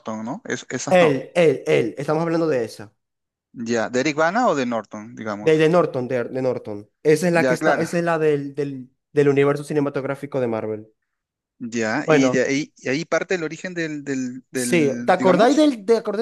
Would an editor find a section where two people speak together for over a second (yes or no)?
yes